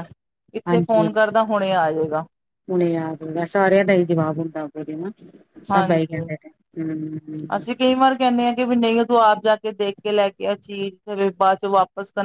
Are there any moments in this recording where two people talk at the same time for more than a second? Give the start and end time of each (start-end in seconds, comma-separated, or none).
0.7-2.1